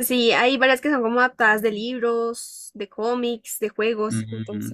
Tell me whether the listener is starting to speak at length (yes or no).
yes